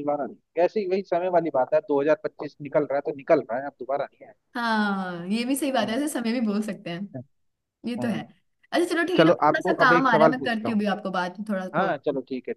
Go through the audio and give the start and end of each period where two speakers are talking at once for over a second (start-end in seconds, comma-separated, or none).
9.2-10.8